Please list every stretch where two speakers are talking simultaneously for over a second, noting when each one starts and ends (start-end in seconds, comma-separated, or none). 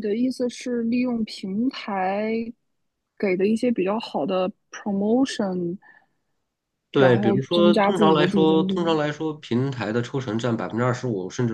7.0-9.0